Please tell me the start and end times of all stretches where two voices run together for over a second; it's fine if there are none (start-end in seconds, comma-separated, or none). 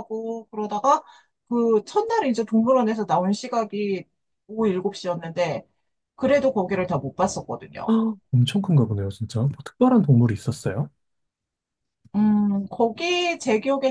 none